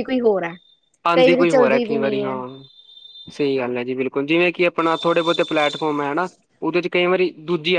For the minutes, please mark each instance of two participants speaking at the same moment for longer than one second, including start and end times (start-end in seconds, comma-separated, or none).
1.1-2.4